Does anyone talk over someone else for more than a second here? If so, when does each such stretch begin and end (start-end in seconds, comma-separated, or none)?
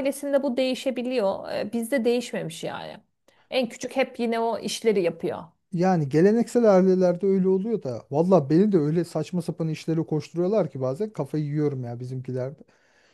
none